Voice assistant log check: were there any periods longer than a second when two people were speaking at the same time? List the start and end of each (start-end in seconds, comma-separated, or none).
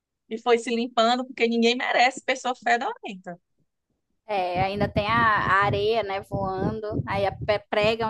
none